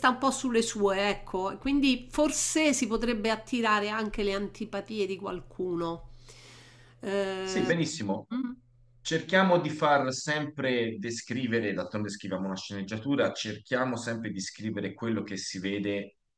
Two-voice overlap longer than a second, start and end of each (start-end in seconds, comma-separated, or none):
none